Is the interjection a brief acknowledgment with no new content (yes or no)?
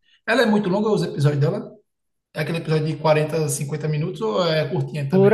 no